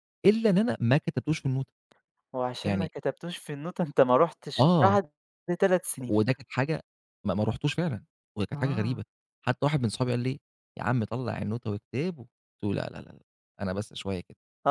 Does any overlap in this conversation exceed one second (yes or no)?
no